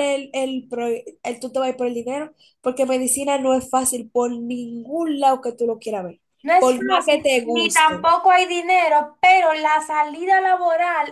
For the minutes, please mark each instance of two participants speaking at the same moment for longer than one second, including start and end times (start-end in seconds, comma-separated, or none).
6.6-8.1